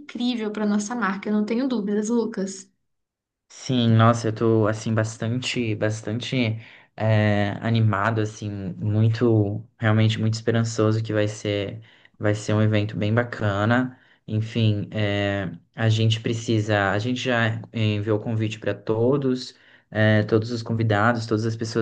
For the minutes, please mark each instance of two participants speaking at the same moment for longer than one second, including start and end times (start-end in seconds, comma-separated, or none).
none